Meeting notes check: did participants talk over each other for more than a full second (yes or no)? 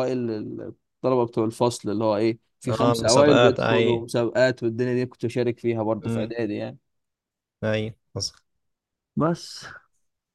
yes